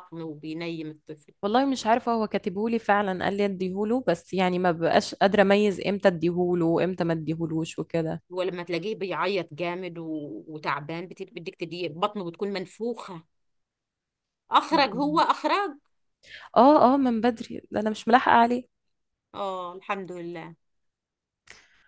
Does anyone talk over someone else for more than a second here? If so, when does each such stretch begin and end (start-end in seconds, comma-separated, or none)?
none